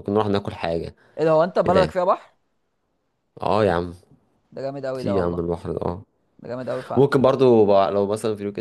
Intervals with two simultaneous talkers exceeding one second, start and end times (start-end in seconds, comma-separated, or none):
none